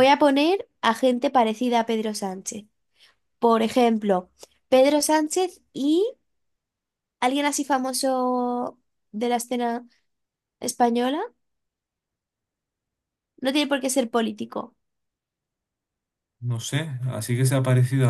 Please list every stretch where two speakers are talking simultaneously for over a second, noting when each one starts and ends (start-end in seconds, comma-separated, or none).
none